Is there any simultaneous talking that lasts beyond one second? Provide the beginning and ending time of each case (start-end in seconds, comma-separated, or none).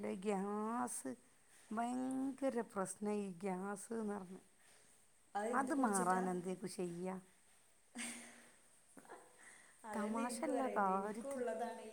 9.9-11.4